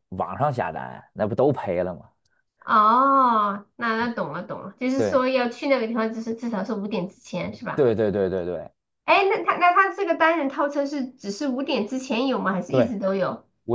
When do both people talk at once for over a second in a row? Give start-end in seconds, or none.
none